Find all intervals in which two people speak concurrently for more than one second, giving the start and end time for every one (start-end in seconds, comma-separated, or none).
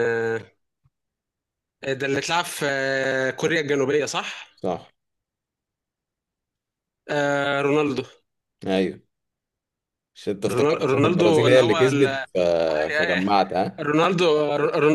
10.5-12.2